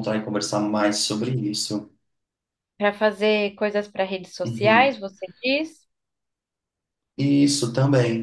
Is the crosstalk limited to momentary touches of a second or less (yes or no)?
yes